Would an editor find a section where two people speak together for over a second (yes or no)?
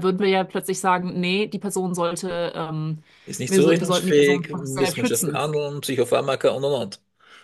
yes